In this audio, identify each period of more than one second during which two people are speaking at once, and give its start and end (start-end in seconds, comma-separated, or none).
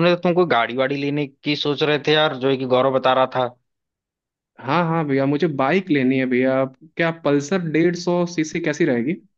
none